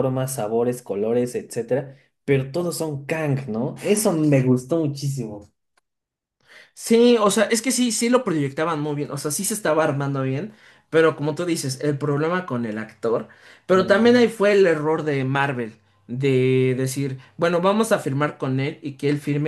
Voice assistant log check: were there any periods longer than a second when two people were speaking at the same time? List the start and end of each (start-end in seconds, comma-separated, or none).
none